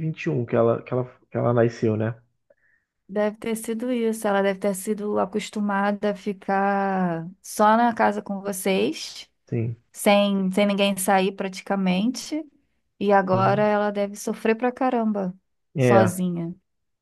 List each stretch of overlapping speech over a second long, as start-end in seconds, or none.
none